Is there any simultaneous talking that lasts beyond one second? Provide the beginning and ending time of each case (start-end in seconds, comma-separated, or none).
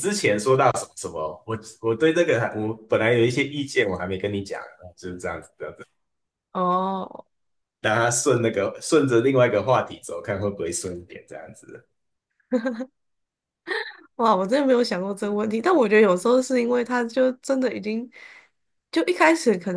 none